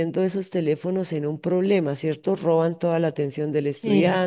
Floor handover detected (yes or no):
no